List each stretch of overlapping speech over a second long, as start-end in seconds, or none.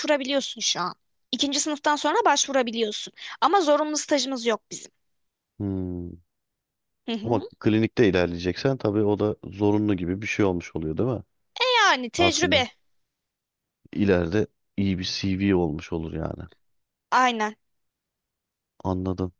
none